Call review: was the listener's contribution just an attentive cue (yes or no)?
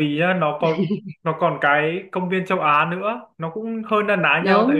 yes